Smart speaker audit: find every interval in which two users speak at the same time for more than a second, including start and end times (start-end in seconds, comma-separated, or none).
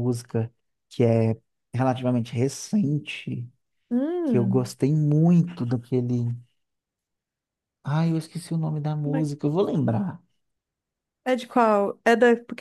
none